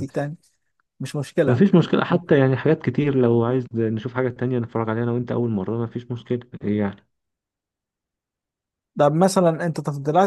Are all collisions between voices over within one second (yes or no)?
yes